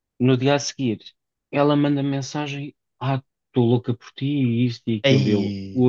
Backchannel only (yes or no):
yes